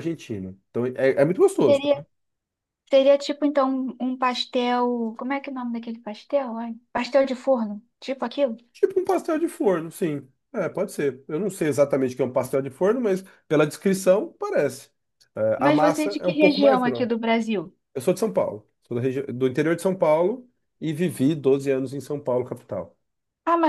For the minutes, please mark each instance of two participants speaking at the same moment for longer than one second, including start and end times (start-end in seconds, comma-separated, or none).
15.6-17.1